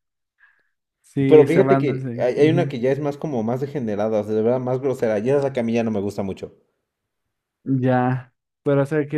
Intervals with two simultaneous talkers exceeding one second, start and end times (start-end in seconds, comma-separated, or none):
1.3-2.7